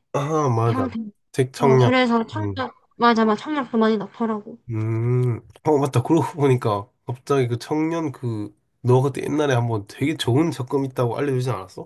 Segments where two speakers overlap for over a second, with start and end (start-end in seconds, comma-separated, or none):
none